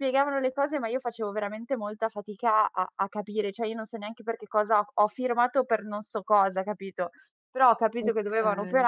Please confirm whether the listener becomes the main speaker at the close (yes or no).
no